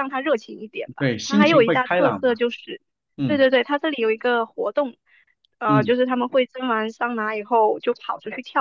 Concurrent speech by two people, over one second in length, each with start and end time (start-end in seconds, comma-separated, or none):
1.0-2.4